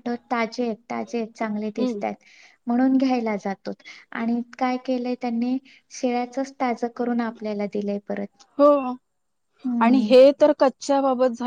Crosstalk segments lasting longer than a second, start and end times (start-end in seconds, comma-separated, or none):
none